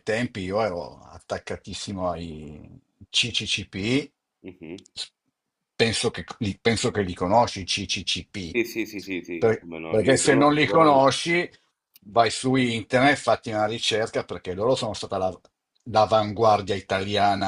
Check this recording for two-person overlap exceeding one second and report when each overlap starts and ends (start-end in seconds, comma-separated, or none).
9.4-11.1